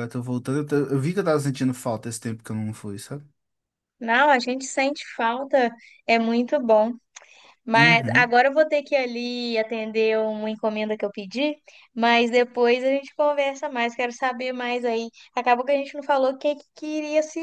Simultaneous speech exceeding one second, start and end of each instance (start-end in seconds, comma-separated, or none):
none